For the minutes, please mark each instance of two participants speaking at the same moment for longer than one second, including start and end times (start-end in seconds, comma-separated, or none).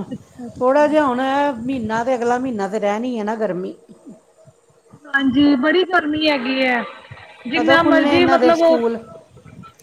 7.5-8.8